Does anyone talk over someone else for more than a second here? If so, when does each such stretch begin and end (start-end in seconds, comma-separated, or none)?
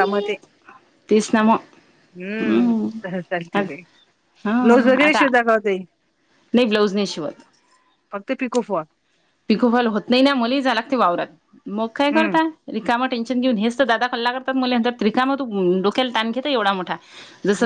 none